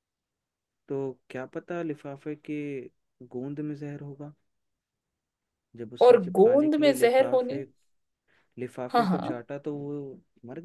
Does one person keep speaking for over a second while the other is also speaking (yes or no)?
yes